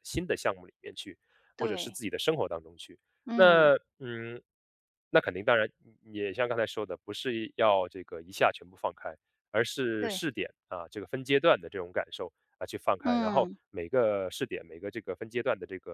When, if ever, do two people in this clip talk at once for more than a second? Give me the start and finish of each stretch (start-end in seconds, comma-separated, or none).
none